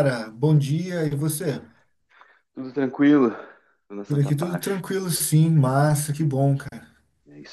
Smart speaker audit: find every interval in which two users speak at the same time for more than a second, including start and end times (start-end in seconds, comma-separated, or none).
none